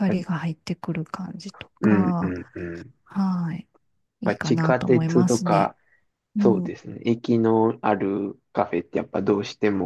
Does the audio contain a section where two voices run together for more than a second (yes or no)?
yes